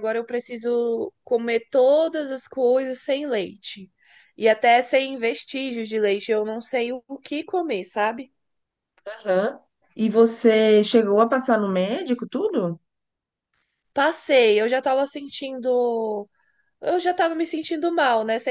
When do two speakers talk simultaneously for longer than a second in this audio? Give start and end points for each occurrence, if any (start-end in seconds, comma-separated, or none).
none